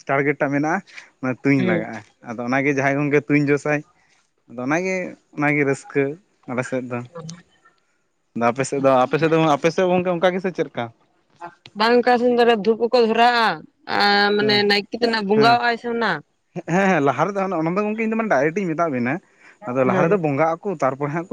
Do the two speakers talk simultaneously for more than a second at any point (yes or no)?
no